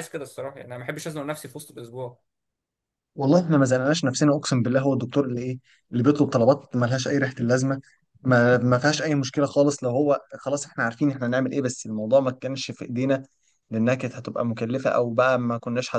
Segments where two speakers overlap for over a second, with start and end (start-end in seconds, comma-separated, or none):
none